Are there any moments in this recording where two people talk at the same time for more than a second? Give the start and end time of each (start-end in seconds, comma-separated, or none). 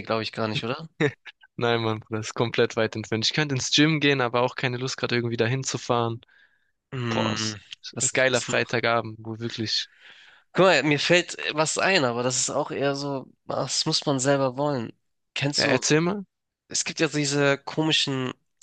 7.1-8.8